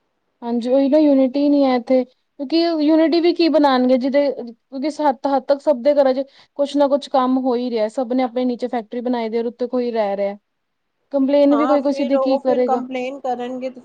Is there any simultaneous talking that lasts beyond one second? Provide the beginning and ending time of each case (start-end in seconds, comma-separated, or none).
11.5-12.8